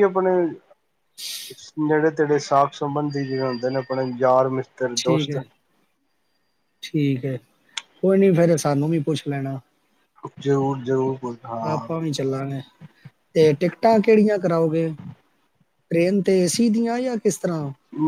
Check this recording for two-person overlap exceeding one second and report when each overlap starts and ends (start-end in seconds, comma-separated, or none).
none